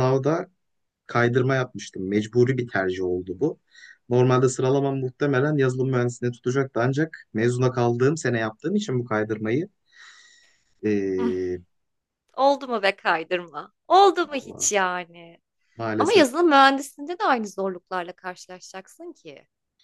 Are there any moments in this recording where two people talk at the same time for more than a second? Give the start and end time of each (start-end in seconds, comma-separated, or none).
none